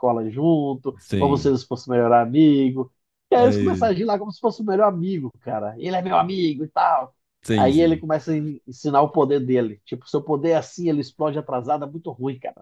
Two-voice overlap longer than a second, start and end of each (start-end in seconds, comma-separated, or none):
none